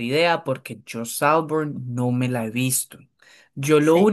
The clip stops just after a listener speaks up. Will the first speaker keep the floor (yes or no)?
yes